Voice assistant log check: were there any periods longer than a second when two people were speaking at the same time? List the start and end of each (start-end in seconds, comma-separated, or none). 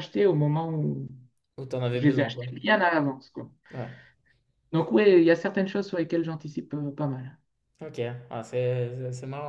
none